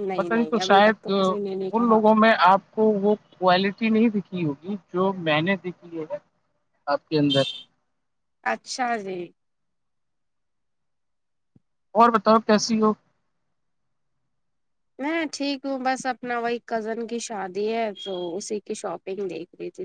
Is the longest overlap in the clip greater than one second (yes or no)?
yes